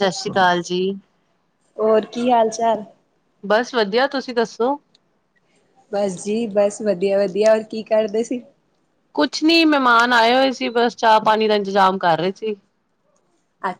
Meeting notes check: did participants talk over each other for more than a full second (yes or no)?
no